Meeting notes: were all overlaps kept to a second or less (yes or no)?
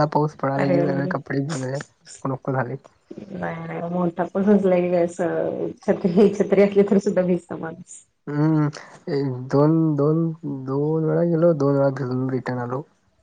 yes